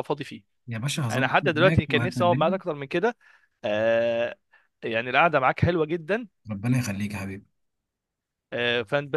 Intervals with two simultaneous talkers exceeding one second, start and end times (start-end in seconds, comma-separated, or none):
1.1-2.6